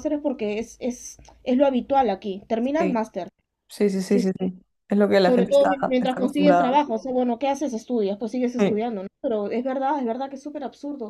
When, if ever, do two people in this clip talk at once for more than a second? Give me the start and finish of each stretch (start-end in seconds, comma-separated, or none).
5.2-6.8